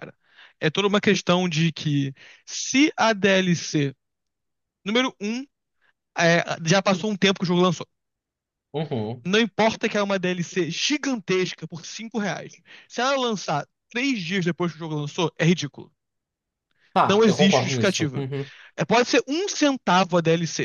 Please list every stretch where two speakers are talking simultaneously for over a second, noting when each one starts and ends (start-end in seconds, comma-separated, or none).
17.0-18.2